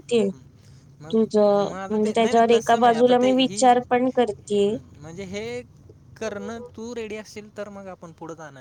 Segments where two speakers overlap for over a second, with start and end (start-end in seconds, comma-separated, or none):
1.9-3.7